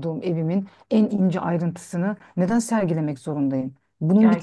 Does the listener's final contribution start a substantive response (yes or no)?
no